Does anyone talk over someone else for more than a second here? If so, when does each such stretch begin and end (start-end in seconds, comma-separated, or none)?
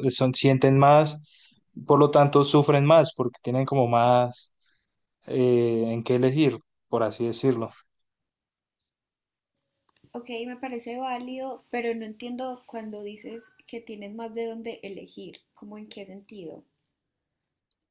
none